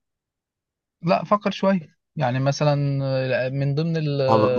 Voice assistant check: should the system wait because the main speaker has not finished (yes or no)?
no